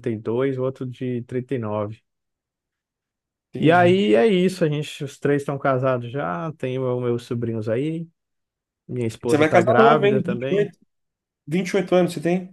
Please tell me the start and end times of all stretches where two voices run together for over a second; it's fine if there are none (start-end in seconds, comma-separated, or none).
9.2-10.7